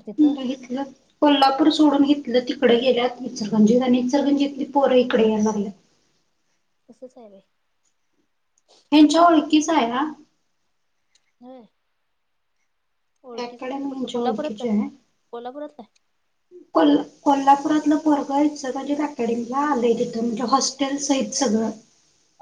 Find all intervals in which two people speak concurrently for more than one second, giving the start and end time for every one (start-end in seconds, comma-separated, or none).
13.4-14.7